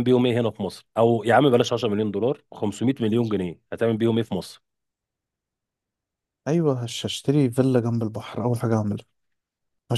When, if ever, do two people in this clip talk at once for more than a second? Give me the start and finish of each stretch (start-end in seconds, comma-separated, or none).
none